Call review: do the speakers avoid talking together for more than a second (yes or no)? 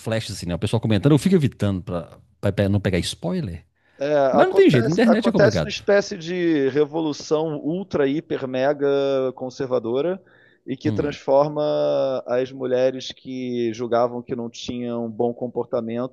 no